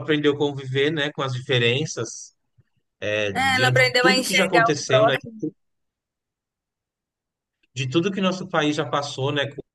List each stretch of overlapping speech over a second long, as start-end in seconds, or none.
3.3-5.2